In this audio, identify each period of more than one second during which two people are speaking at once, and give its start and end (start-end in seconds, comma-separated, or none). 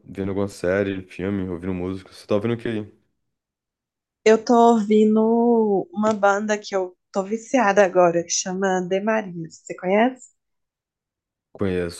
none